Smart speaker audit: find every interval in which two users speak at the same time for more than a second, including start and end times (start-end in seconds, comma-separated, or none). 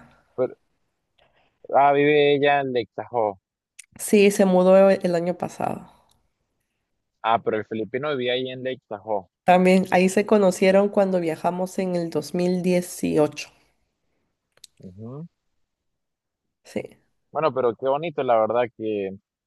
none